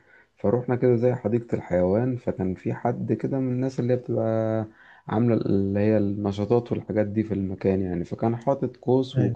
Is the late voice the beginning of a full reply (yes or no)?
no